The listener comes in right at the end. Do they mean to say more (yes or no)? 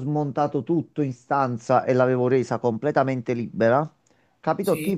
no